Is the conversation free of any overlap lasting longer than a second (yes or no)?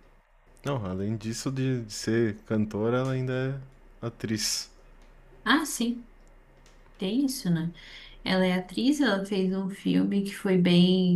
yes